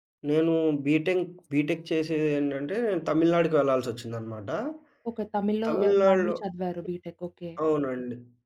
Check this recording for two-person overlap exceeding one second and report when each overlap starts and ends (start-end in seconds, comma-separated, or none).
none